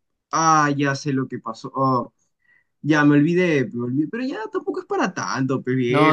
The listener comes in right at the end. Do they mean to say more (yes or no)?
yes